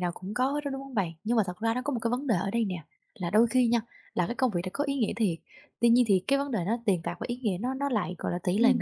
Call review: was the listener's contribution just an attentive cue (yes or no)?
yes